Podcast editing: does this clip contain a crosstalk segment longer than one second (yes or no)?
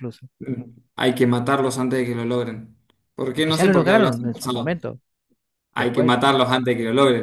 yes